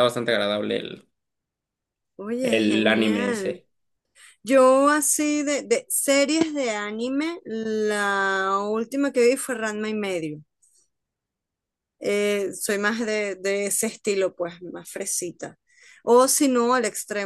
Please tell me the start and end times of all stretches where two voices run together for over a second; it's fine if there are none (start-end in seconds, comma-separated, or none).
2.4-3.6